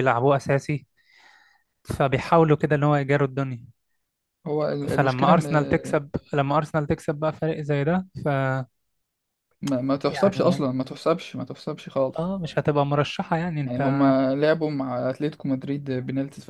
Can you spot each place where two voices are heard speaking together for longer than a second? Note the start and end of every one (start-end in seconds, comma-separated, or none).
none